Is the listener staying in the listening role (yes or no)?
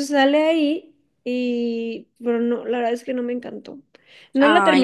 yes